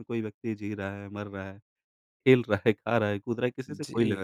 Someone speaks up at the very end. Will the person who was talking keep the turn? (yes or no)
no